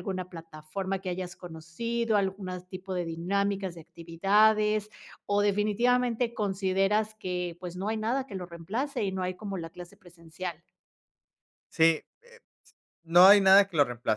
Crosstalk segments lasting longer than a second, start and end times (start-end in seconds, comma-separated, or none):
none